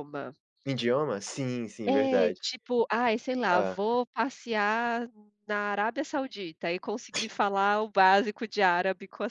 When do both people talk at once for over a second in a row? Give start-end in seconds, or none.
none